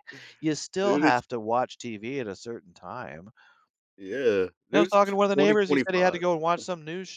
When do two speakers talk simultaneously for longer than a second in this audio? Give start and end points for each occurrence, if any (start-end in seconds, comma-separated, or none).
4.7-6.2